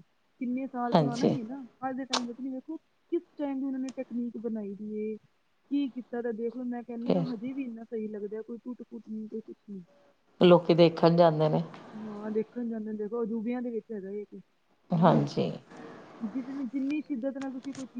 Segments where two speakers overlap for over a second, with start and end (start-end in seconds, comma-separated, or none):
none